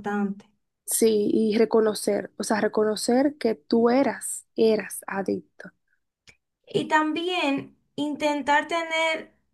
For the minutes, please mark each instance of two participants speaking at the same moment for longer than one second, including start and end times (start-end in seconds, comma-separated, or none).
none